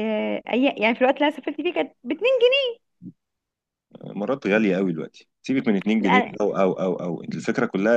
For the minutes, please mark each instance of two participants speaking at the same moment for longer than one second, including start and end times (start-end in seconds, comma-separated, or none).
none